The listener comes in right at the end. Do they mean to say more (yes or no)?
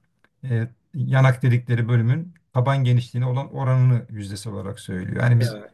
yes